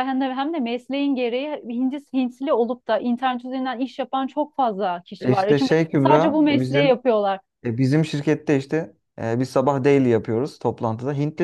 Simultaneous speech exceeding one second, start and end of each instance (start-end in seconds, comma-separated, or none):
5.2-7.0